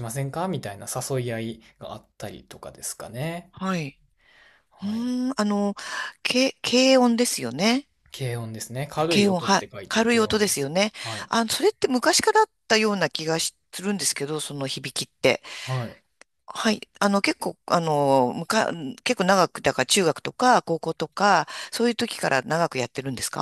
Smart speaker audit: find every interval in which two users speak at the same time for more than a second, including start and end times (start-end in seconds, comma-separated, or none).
9.1-10.9